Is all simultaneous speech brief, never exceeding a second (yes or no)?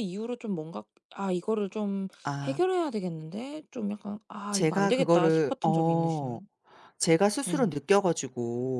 no